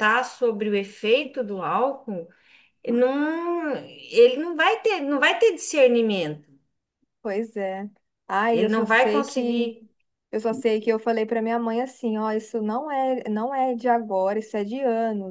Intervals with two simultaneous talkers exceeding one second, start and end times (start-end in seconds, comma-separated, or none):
8.5-9.7